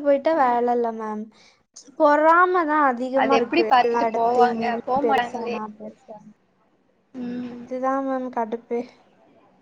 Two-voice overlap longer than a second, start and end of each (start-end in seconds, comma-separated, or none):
3.2-5.6